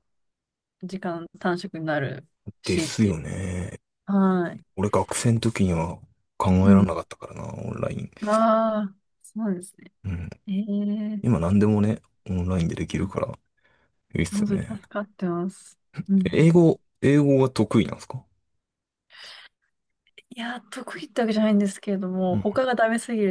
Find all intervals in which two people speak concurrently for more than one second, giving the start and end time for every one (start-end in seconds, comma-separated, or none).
none